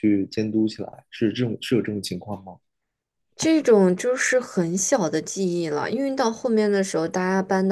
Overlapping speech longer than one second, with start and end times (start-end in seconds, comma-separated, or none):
none